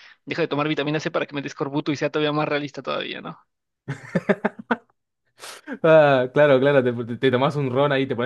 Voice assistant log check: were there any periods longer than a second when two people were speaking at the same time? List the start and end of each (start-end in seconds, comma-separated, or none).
none